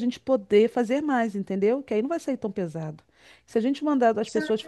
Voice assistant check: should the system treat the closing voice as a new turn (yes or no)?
no